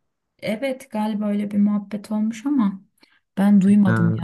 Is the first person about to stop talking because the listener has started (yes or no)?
no